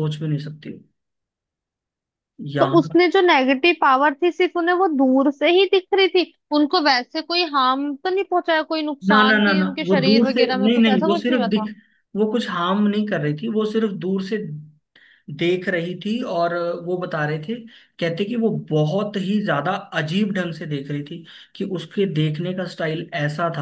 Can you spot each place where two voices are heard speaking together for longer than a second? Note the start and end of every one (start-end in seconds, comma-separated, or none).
9.1-11.7